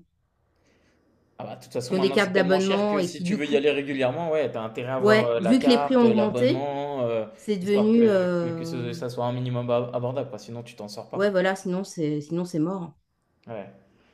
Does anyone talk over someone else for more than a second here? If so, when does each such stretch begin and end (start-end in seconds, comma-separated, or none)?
1.9-3.6, 5.0-6.7, 7.6-8.9